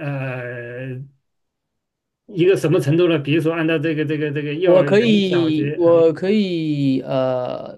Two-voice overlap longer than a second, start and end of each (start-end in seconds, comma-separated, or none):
4.6-6.0